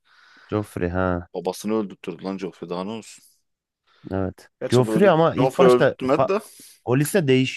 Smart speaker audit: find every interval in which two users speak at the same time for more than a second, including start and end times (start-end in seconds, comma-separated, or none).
4.6-6.3